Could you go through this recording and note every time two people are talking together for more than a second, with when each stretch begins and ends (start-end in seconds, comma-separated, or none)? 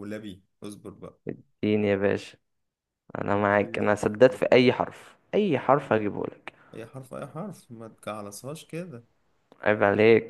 none